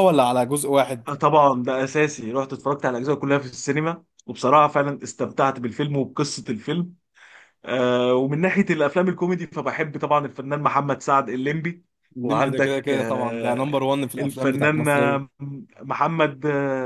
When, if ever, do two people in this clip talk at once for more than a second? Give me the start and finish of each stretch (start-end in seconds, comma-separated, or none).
12.2-15.3